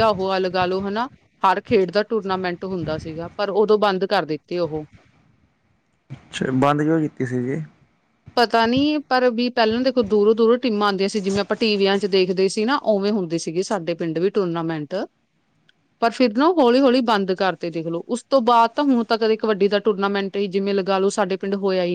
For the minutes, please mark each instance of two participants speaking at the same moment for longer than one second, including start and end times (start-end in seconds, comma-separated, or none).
none